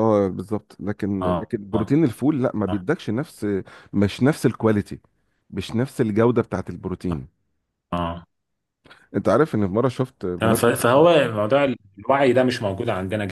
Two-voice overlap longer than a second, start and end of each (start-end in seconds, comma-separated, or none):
none